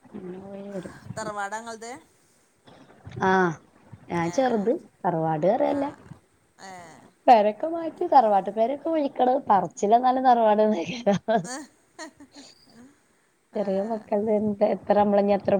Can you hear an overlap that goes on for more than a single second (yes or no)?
no